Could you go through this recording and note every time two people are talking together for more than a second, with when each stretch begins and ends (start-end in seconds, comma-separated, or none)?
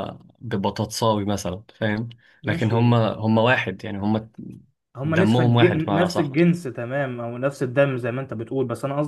5.0-6.3